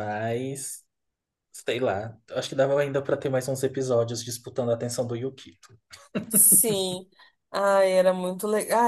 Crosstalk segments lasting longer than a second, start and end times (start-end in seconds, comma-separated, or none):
none